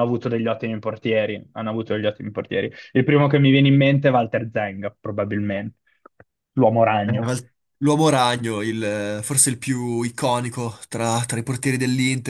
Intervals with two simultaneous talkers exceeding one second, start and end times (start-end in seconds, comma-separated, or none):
none